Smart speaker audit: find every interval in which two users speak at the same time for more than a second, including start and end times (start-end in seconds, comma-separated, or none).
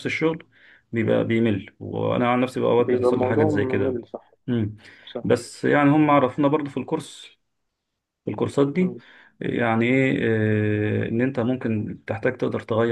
2.8-4.0